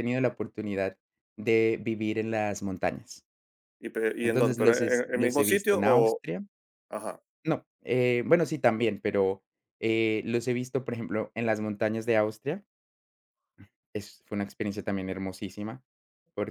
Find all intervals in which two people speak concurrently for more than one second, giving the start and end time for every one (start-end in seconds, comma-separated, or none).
4.2-6.2